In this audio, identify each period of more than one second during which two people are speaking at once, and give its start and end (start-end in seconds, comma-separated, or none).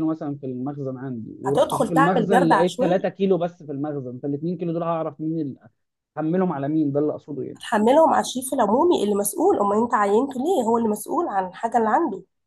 1.5-3.1